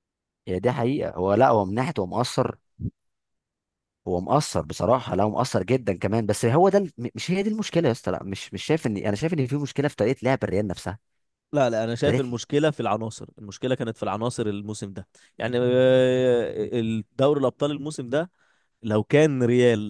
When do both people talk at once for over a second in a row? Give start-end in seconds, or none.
none